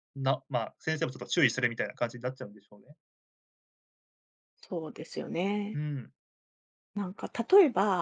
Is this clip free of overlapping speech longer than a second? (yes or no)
yes